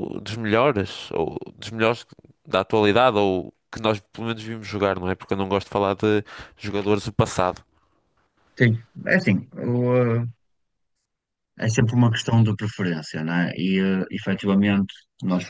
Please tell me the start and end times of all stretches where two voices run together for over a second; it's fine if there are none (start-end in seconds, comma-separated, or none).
none